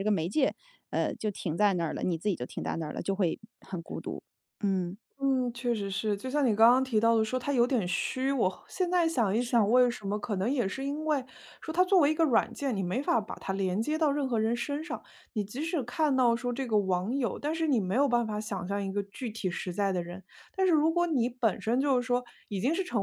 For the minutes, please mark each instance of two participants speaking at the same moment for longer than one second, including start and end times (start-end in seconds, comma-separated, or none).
none